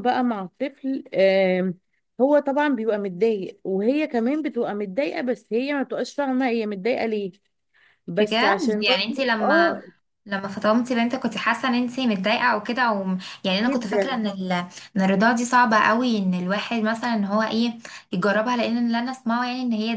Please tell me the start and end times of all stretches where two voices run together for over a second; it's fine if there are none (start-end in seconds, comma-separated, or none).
8.2-9.8